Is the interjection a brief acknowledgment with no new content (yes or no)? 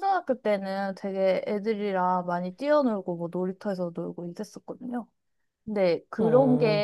yes